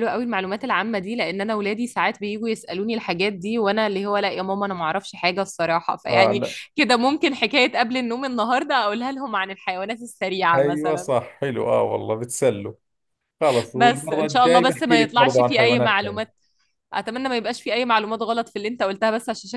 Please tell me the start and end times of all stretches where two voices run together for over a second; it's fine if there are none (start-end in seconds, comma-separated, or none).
13.8-16.3